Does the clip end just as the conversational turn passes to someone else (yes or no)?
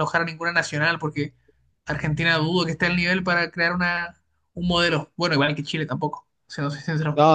yes